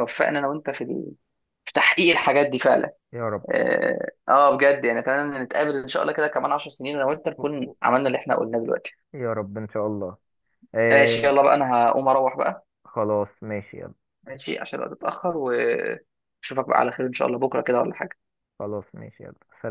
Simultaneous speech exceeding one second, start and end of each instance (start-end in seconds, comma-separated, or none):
none